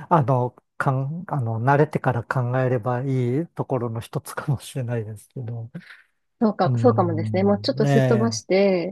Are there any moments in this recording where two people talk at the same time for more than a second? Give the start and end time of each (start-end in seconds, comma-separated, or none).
6.7-8.4